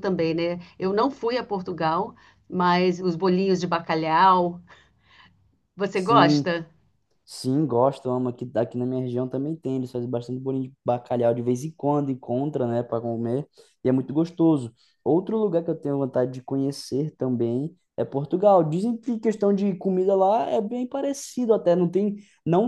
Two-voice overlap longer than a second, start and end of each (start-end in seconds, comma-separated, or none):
none